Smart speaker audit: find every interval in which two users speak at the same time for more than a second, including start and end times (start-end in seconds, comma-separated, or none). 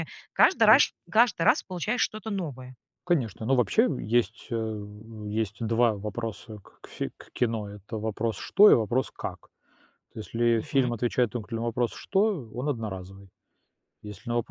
none